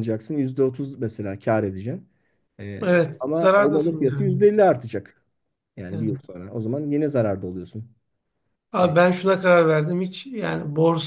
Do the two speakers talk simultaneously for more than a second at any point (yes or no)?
yes